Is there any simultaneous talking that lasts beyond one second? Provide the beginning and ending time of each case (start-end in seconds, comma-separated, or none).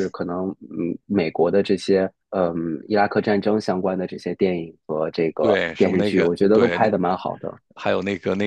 5.4-6.9